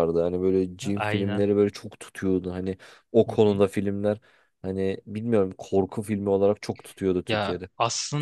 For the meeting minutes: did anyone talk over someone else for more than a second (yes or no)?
no